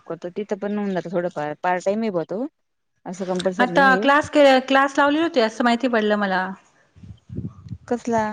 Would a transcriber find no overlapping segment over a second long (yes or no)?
yes